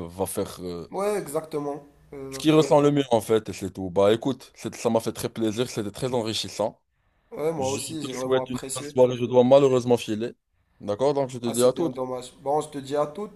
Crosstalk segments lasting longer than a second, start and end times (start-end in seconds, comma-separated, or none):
7.6-8.9